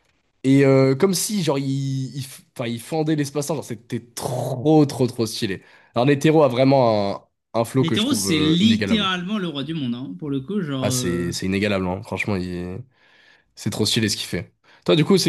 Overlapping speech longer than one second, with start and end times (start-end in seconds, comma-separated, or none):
7.8-9.1